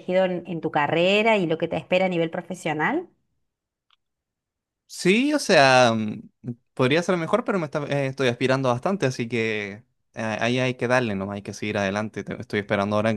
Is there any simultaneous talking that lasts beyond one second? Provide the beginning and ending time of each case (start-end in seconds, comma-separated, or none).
none